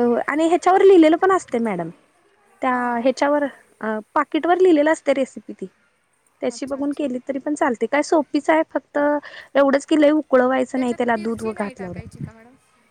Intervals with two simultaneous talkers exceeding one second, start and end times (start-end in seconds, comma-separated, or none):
10.8-12.0